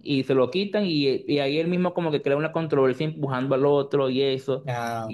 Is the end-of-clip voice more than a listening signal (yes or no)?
no